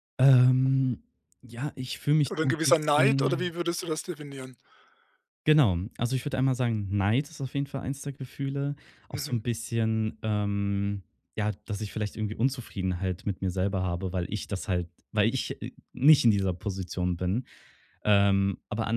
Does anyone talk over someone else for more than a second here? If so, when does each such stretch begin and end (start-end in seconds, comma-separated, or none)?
2.3-3.5